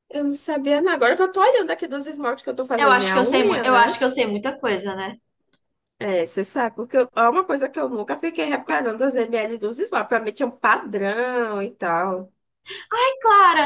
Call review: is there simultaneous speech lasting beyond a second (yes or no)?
yes